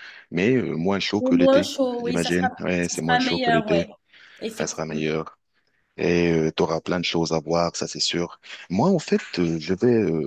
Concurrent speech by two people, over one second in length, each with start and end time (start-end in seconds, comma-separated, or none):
1.2-3.9